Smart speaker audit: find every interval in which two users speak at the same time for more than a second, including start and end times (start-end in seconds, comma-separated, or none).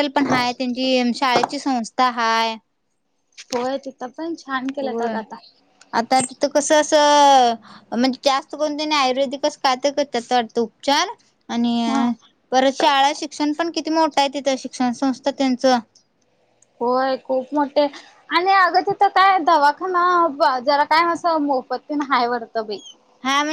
none